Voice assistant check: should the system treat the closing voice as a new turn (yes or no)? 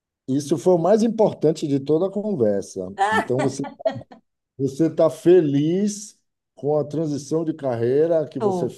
no